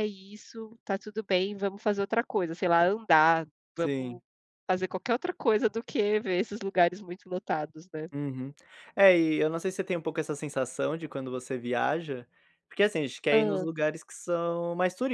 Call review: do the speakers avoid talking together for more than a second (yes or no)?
yes